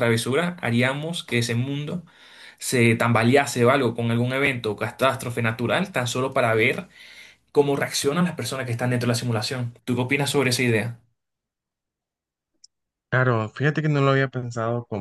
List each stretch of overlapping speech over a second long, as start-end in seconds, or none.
none